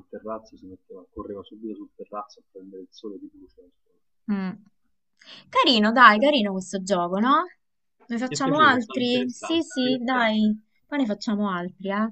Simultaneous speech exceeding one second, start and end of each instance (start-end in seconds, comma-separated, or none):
8.3-10.3